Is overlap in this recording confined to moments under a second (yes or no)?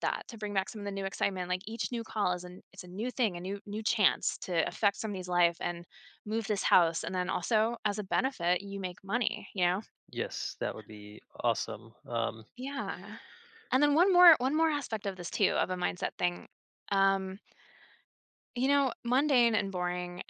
yes